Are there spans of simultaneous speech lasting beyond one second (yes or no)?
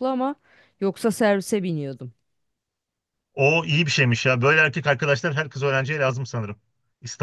no